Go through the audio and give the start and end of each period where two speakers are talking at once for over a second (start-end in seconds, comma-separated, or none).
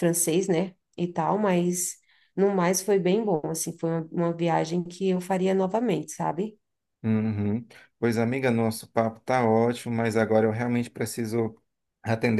none